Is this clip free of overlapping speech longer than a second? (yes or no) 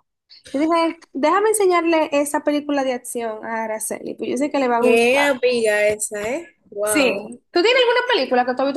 yes